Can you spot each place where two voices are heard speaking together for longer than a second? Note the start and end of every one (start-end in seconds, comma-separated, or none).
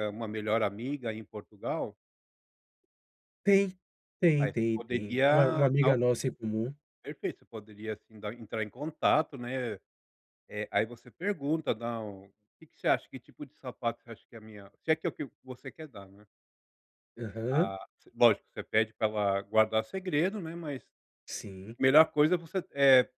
4.4-6.0